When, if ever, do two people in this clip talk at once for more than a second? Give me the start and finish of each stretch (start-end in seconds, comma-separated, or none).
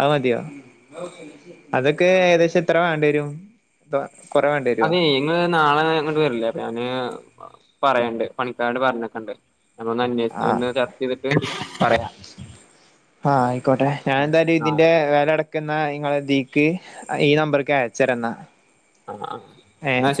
none